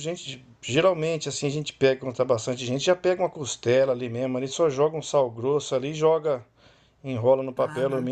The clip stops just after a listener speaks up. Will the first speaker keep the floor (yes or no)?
yes